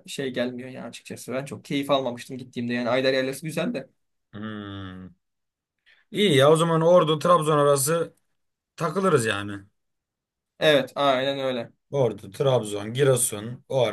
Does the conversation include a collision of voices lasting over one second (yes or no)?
no